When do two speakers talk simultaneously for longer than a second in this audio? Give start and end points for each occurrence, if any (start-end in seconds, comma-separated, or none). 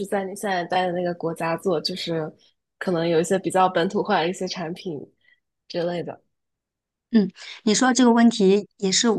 none